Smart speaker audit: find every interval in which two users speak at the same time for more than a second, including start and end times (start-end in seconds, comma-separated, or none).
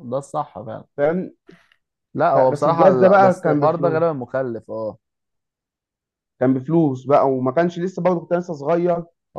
2.3-4.0